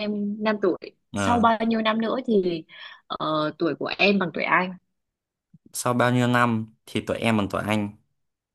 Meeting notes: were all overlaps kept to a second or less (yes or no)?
yes